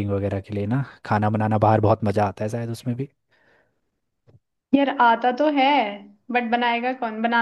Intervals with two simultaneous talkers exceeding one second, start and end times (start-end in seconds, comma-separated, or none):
none